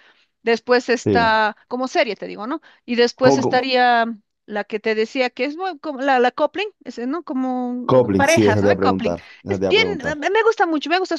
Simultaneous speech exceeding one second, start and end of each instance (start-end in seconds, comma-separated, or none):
7.9-10.2